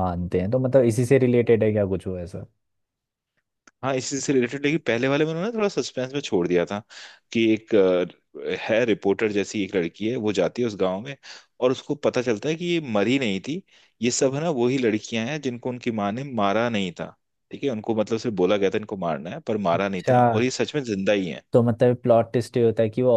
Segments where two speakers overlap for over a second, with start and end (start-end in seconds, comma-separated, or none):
none